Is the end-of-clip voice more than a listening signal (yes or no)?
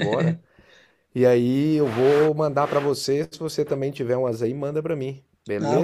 yes